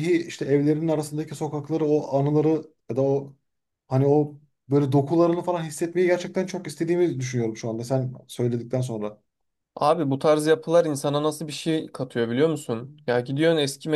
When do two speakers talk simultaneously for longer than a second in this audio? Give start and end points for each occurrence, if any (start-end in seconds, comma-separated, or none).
none